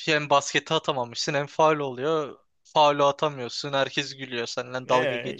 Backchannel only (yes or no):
no